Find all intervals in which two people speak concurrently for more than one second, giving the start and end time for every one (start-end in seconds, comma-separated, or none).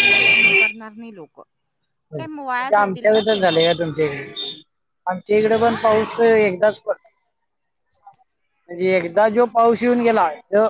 2.2-3.6